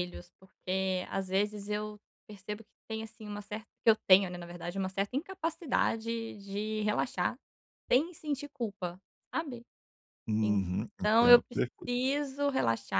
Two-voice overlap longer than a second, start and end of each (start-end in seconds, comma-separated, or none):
10.4-12.2